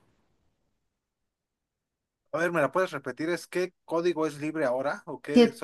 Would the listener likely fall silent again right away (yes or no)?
no